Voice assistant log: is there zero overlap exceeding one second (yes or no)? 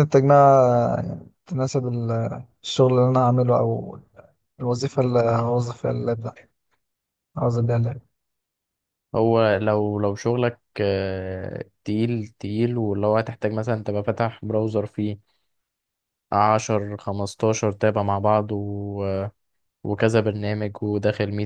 yes